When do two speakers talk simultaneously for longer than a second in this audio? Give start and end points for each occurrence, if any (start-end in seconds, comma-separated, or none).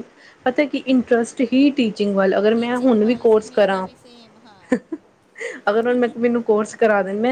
2.5-3.9